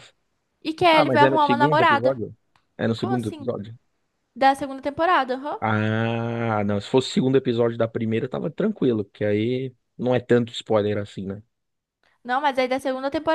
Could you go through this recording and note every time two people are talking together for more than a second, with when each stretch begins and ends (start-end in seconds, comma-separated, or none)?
0.9-2.2